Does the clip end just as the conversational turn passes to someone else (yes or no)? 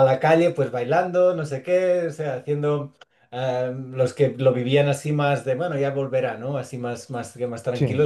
no